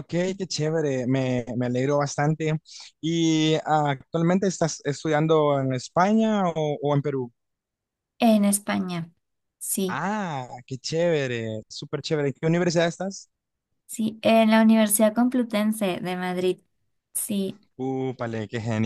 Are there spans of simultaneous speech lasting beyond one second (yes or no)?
no